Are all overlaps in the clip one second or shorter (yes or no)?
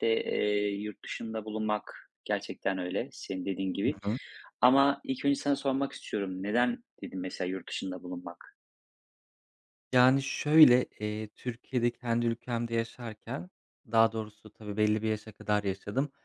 yes